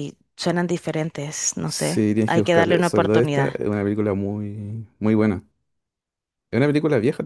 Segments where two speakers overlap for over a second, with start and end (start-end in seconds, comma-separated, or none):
1.6-3.6